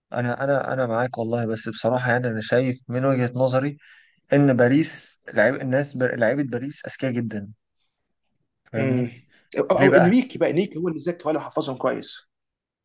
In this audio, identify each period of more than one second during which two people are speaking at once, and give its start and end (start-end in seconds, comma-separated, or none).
none